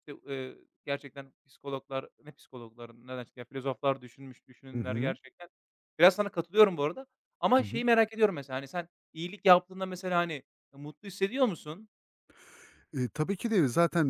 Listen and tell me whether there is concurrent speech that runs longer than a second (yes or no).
no